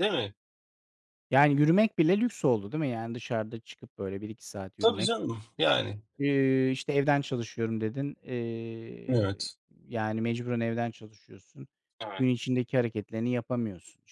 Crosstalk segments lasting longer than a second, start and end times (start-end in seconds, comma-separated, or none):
none